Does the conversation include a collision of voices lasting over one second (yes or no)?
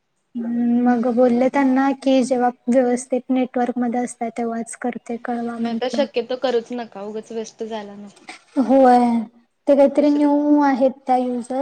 no